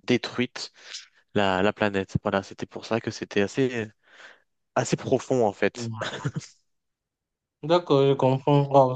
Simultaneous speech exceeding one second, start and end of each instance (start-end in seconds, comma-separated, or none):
none